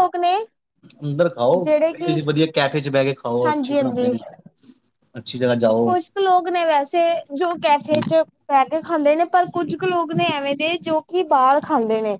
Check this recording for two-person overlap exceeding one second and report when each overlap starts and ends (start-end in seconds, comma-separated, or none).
none